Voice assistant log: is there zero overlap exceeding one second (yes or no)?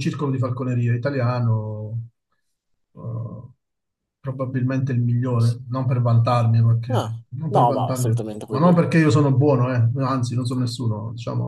no